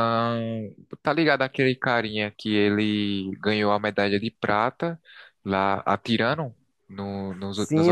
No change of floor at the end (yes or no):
no